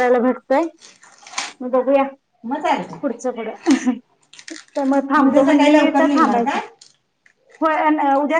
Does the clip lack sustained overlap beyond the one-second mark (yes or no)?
no